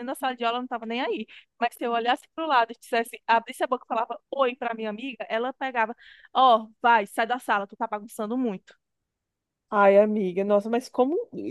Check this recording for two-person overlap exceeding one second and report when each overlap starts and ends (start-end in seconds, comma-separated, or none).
none